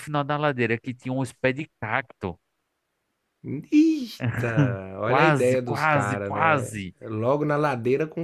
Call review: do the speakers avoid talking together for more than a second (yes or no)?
no